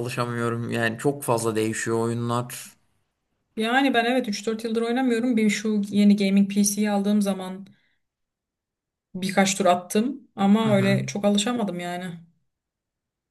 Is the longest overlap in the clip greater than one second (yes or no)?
no